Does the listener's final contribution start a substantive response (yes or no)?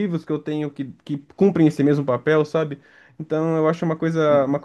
no